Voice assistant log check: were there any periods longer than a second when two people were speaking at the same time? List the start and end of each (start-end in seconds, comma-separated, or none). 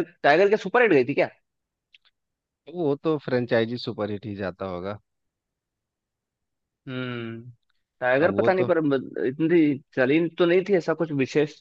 none